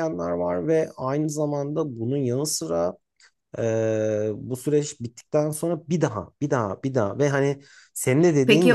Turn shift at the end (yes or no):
yes